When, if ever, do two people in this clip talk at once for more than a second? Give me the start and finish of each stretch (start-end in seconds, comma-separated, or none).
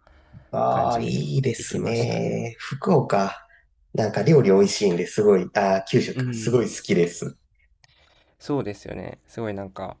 0.7-2.4